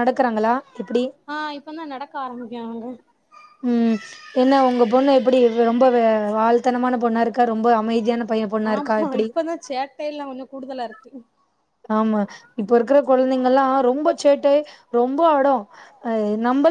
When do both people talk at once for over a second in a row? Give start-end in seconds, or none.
none